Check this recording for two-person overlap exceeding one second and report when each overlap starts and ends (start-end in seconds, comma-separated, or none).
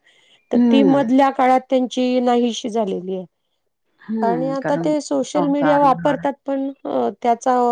4.3-6.2